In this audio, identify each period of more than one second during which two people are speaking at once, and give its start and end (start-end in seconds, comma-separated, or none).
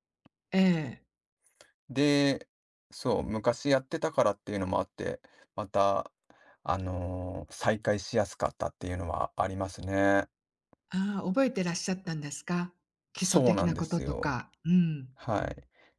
13.2-14.4